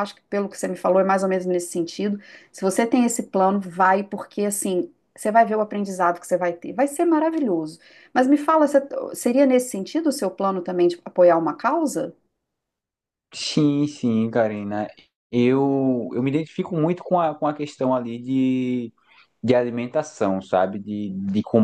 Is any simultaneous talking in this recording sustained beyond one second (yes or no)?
no